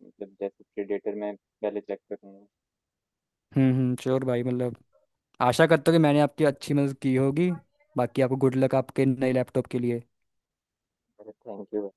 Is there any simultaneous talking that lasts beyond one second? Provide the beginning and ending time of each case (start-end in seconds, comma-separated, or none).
none